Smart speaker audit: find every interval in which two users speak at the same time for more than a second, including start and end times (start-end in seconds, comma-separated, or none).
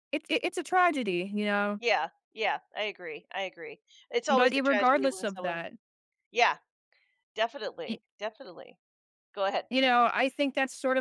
4.3-5.6